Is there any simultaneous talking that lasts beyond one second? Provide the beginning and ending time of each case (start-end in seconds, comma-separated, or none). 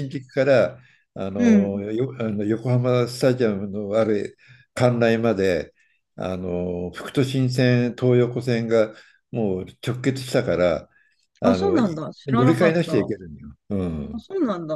11.4-13.1